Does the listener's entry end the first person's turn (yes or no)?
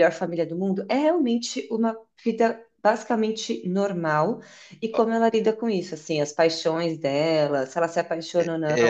yes